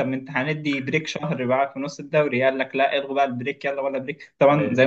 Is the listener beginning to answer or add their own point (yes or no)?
no